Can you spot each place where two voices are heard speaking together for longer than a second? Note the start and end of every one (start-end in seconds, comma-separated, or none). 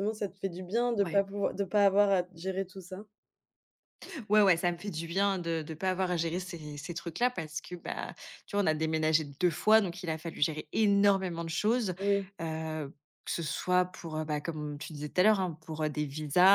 none